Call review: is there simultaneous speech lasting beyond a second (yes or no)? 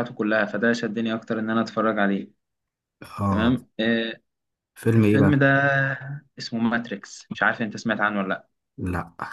no